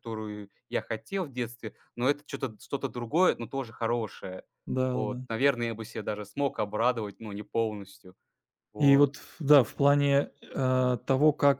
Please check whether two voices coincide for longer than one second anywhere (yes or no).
no